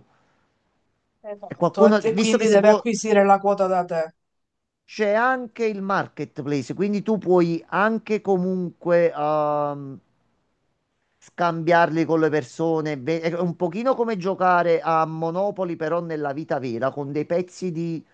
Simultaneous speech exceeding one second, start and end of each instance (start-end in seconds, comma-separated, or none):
1.5-2.9